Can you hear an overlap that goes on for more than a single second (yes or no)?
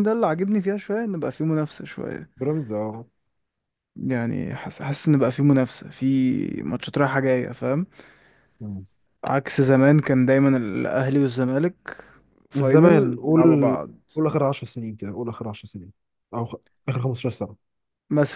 yes